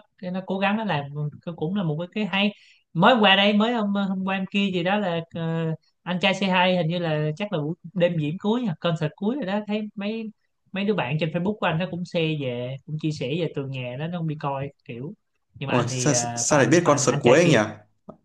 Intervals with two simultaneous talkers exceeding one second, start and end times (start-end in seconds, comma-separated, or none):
15.7-17.6